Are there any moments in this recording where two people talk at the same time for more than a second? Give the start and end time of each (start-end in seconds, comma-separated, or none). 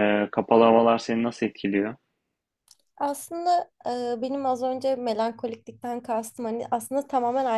none